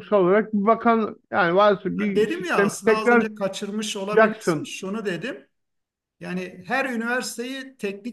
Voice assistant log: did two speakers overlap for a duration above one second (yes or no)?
yes